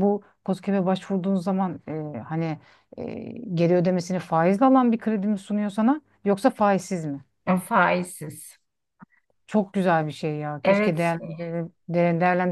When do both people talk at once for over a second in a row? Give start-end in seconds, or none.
none